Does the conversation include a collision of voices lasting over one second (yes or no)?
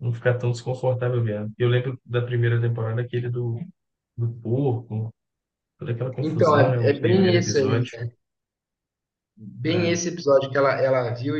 yes